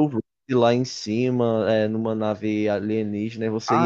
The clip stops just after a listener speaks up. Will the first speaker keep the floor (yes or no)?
no